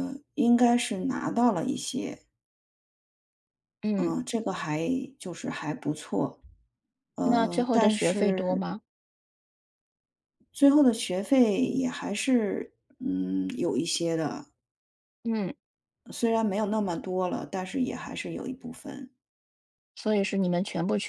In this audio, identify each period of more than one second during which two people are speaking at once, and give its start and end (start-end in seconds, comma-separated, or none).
7.2-8.6